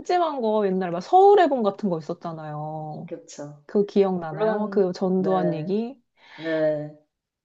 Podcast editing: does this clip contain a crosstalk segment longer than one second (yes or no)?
yes